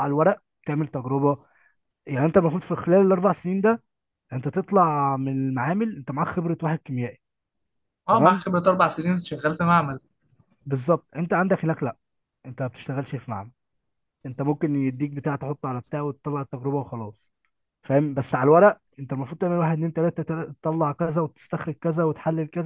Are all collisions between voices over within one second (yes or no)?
yes